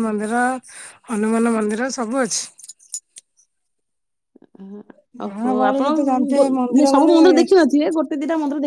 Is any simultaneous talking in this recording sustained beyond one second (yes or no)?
yes